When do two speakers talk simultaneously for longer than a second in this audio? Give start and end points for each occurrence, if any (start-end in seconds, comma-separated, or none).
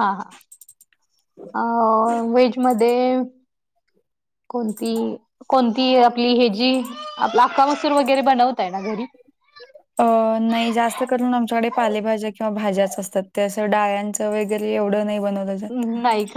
none